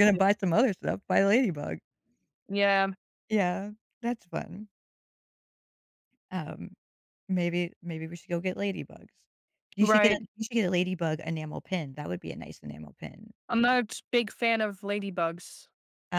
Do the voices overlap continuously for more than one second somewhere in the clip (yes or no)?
no